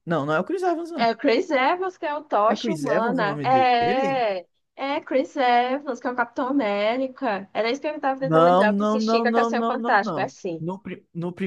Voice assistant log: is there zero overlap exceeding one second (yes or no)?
no